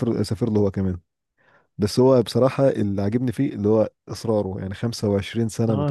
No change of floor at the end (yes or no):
no